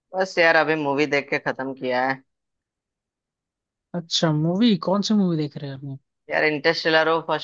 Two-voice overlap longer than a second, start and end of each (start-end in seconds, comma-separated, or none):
none